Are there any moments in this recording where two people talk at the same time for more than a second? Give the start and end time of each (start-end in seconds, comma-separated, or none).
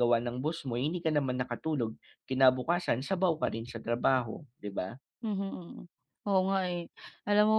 none